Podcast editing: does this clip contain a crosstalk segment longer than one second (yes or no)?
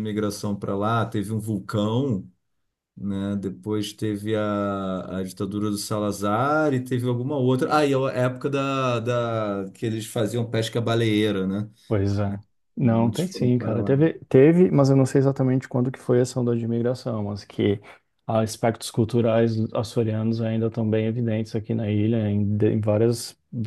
yes